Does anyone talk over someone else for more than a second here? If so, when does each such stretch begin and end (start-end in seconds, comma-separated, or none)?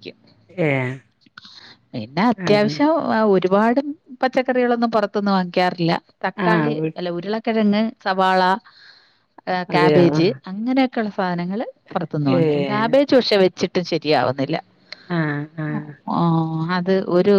none